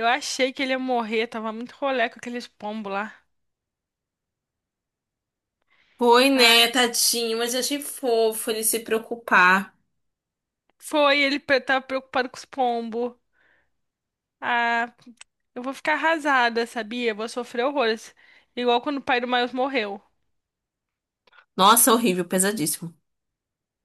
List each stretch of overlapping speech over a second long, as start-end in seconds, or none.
none